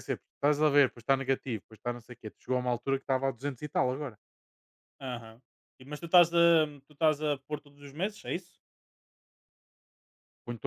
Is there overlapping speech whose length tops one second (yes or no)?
no